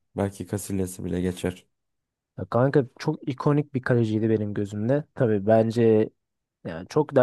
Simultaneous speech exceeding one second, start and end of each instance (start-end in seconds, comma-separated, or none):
none